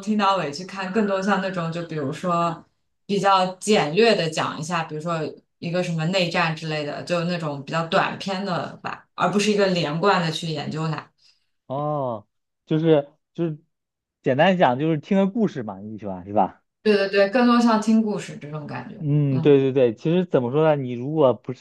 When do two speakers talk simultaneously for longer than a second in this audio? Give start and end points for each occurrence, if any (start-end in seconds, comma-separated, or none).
none